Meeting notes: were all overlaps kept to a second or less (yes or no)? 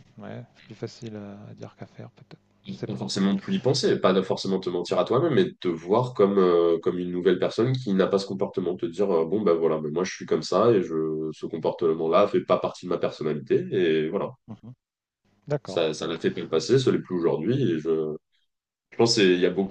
yes